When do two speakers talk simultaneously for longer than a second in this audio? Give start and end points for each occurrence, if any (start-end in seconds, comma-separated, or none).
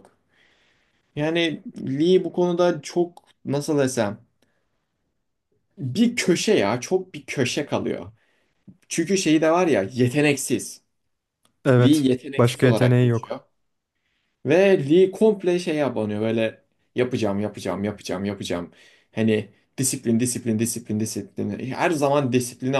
11.8-13.3